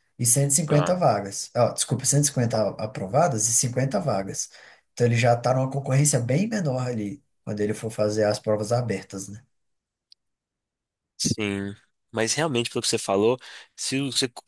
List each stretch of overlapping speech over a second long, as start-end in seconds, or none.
none